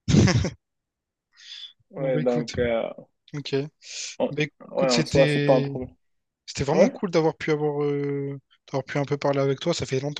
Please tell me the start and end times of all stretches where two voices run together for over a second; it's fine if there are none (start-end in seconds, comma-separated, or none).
4.3-5.8